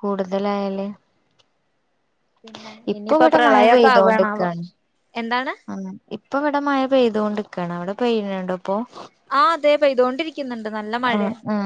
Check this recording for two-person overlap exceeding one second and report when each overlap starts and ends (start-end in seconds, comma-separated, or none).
2.9-4.5